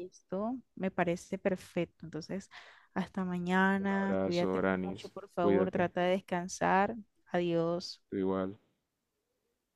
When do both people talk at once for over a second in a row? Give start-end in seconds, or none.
3.8-5.9